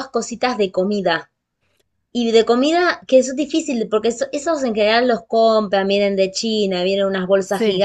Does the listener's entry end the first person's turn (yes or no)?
no